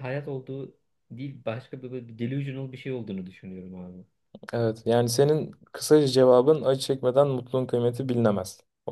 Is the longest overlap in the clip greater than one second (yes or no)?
no